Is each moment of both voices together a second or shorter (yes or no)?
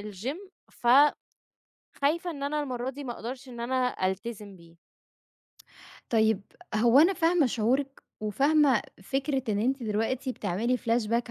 yes